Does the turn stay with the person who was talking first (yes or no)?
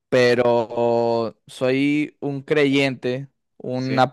yes